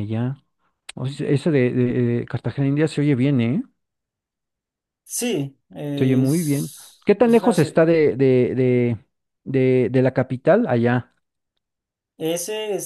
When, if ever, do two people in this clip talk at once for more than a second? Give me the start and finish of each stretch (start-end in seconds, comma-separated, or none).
6.0-7.8